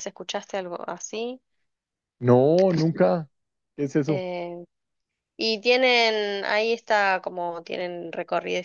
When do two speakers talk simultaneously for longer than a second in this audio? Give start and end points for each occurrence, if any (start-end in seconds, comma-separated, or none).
none